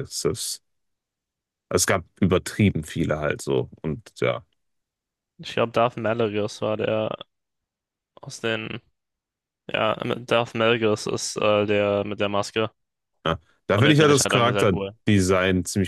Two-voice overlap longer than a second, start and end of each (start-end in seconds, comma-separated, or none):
13.7-14.9